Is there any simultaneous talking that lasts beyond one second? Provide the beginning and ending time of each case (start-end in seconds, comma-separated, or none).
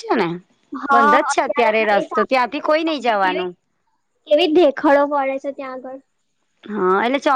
2.0-3.5